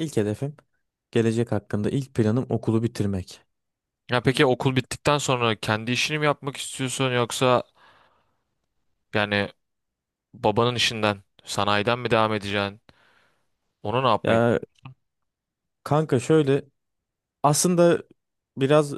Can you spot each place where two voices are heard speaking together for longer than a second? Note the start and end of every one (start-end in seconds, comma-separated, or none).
none